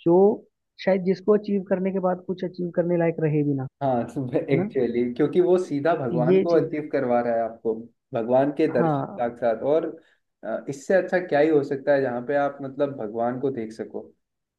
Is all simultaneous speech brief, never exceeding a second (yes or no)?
yes